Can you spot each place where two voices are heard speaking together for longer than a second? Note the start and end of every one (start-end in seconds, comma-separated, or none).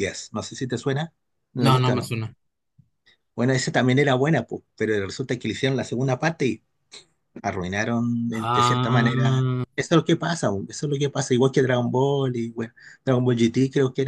8.3-9.6